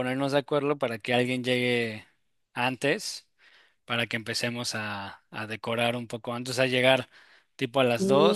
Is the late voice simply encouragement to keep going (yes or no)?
yes